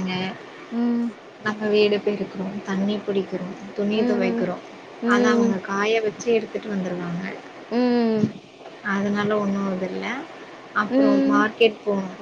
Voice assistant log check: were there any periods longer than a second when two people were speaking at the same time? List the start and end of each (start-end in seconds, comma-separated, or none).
none